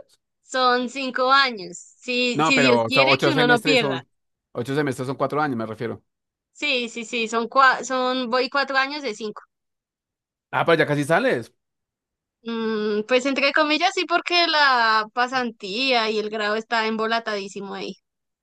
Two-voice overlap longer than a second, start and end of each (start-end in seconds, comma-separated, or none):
2.3-4.0